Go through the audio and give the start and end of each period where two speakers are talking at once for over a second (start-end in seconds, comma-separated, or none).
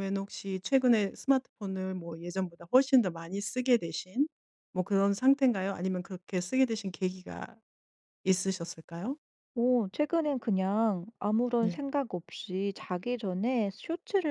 none